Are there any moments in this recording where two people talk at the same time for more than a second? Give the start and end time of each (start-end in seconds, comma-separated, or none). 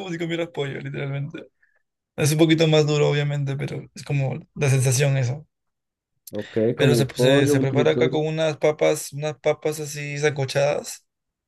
6.8-8.2